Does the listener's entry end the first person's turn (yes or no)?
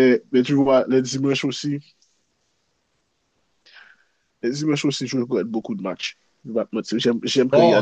yes